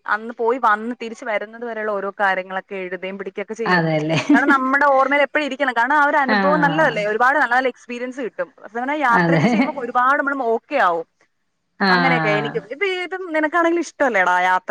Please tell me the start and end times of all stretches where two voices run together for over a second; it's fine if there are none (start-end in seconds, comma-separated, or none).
none